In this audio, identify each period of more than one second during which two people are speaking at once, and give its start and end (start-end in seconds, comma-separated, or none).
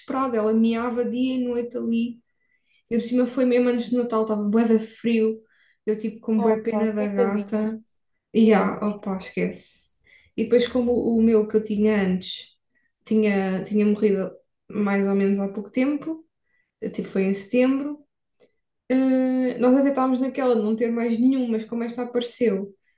6.3-7.7